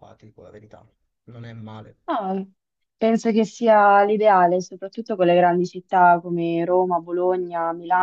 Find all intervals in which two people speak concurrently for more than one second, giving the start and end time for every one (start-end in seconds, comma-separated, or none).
none